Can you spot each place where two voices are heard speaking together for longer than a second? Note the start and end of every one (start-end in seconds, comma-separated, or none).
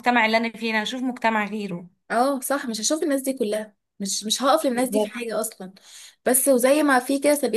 none